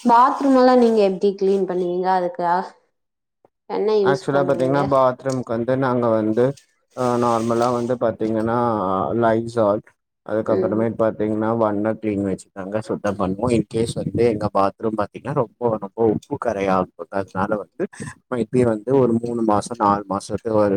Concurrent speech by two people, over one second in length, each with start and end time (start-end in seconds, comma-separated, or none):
none